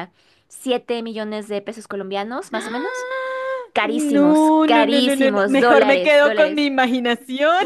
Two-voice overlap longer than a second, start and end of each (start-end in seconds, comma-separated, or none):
3.8-6.7